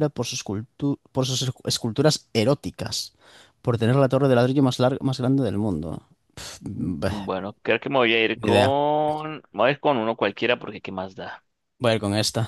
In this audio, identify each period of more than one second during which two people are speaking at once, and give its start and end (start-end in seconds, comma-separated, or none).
none